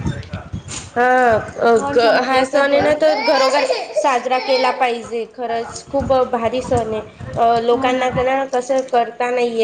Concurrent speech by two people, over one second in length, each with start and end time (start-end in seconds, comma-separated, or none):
1.7-3.3